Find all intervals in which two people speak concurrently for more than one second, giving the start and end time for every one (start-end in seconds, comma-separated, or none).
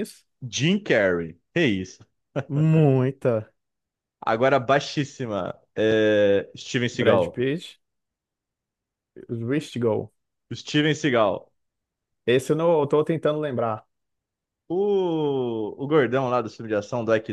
none